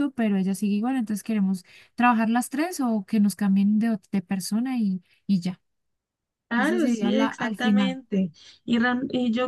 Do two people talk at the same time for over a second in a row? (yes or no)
yes